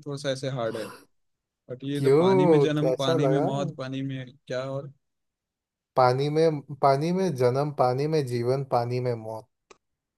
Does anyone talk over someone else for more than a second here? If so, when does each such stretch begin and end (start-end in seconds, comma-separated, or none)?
2.0-3.5